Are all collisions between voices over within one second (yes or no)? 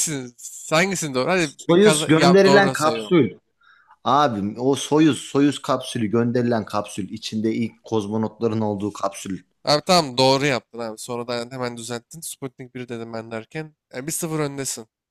no